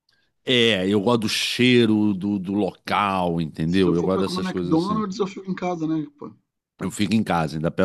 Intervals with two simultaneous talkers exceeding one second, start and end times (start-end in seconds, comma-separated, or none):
3.7-5.0